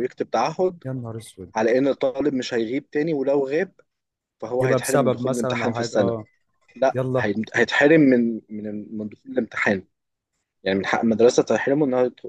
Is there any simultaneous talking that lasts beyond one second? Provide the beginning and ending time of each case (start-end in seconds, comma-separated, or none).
4.6-6.2